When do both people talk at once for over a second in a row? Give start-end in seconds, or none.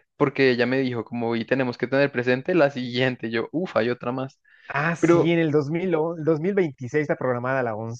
none